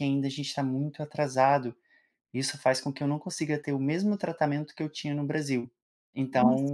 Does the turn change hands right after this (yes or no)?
yes